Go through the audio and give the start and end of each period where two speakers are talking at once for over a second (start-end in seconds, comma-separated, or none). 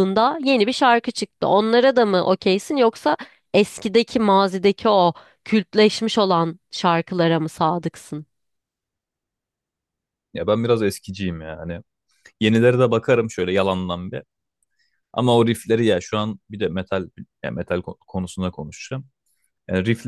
none